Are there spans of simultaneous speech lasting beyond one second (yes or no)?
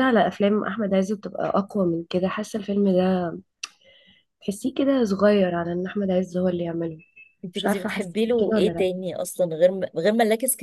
yes